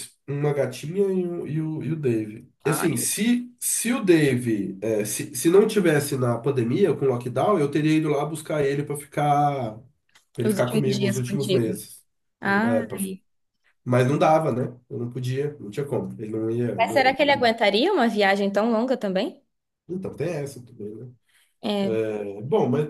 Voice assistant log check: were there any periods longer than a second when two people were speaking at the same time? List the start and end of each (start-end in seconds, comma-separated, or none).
10.4-11.7